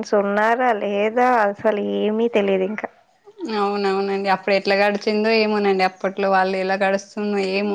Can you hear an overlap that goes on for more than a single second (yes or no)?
no